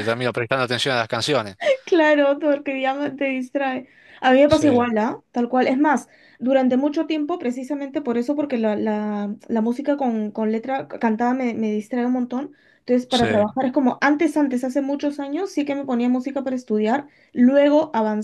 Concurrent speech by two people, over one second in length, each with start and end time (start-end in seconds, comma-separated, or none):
none